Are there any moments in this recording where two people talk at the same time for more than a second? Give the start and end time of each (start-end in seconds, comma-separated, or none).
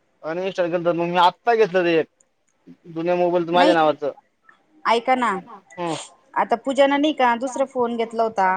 none